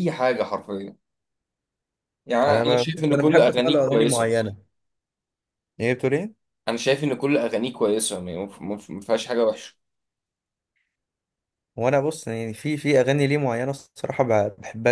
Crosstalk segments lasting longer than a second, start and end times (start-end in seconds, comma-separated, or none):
2.5-4.3